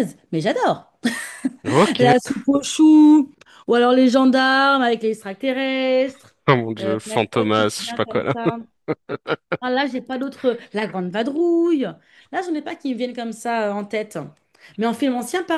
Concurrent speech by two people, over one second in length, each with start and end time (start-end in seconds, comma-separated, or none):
6.8-8.2